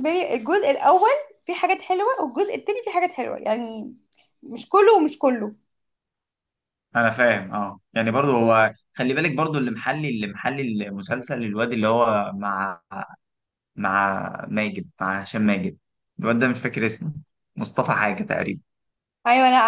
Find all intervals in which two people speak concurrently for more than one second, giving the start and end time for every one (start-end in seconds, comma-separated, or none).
none